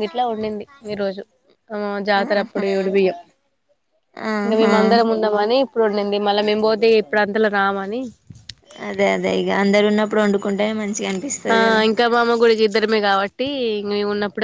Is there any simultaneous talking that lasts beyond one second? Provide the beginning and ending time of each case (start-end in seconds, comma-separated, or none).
none